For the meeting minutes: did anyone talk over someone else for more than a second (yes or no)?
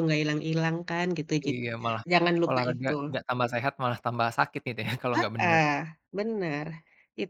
no